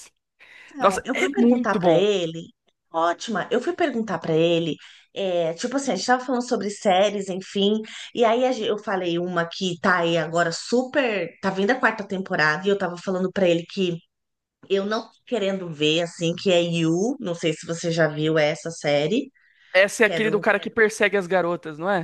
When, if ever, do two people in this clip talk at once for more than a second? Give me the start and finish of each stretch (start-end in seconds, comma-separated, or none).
0.8-2.1